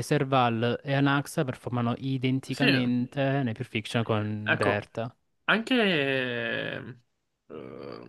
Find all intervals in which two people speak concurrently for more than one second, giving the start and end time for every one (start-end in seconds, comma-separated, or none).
none